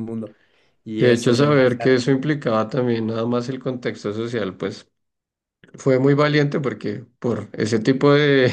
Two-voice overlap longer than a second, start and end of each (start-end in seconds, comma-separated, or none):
1.0-2.2